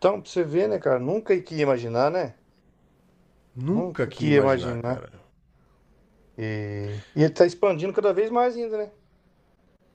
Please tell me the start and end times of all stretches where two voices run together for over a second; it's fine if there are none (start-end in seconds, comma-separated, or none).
3.7-5.0